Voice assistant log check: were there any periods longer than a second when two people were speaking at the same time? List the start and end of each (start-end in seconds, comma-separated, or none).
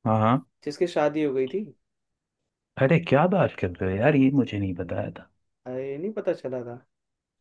none